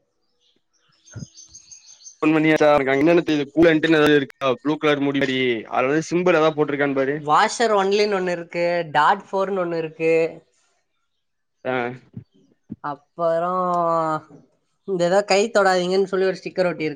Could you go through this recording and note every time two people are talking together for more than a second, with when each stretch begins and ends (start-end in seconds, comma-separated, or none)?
none